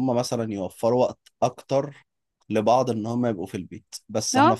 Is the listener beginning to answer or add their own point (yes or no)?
no